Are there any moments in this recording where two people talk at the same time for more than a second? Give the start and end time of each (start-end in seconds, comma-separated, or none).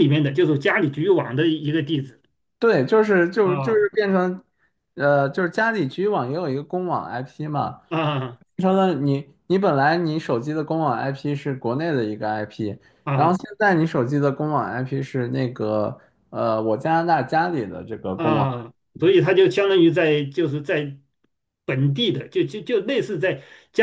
none